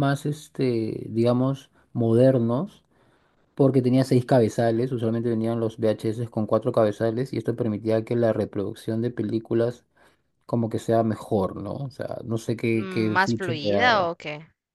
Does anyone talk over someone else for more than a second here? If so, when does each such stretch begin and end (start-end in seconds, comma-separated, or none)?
12.7-14.1